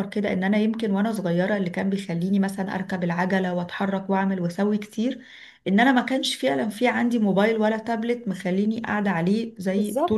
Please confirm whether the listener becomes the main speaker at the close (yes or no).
no